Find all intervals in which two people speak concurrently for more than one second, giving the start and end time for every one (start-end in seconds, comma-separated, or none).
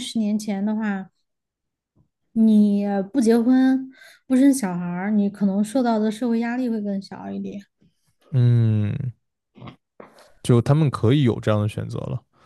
none